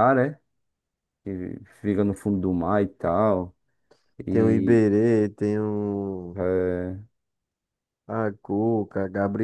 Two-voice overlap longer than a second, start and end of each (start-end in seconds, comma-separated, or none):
none